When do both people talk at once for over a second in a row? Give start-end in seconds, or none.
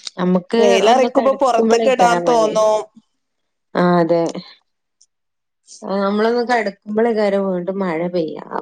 0.6-2.7